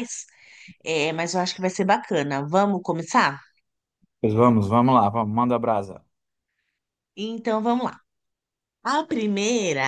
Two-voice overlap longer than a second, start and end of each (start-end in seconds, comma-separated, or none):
none